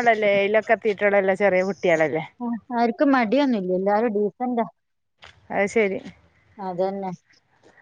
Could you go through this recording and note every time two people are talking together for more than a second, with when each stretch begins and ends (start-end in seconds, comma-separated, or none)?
none